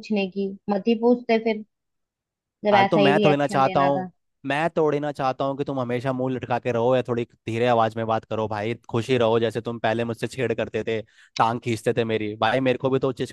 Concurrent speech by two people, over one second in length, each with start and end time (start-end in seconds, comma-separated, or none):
2.7-4.1